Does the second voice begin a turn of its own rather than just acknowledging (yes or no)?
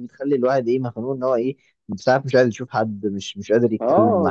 yes